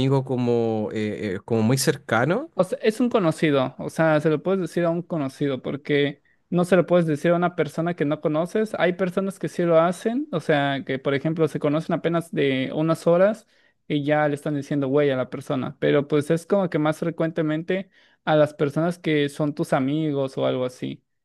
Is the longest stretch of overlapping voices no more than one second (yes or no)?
yes